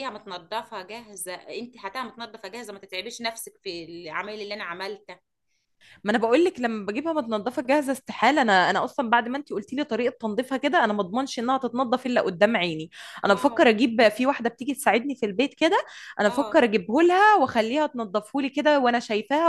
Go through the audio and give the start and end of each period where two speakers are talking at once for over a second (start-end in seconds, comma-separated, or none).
none